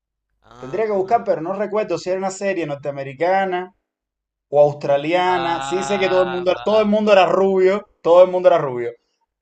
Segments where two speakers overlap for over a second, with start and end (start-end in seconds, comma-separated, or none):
5.2-6.7